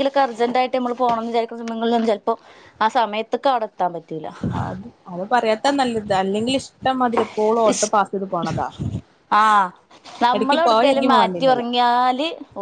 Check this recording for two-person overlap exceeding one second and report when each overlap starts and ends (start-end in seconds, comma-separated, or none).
10.3-11.7